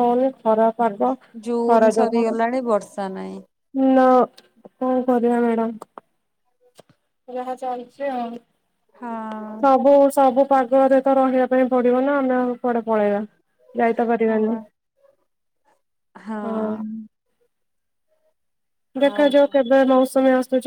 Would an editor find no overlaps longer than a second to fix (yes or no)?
yes